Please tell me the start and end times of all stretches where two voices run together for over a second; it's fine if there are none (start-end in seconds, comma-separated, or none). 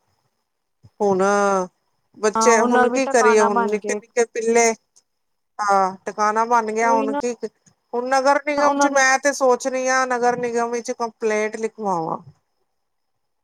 2.4-4.0